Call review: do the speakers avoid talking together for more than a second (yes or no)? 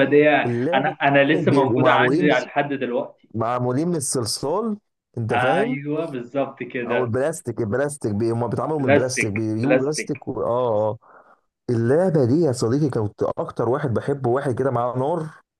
no